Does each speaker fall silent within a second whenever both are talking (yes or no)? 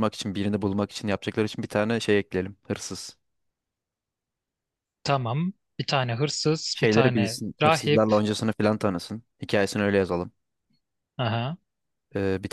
no